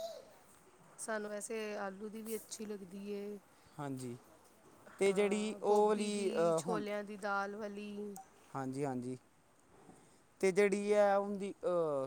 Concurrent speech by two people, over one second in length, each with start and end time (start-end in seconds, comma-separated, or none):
5.1-6.3